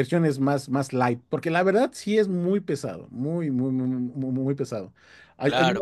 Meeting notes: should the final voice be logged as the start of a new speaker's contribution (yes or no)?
no